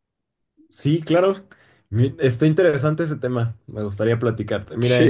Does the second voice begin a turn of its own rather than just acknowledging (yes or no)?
no